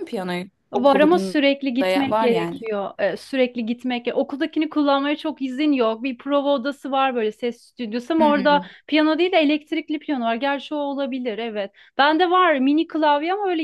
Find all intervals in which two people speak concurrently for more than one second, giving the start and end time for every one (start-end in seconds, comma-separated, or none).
0.7-2.6